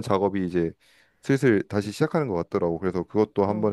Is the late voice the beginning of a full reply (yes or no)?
no